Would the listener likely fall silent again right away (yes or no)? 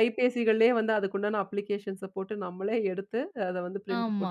no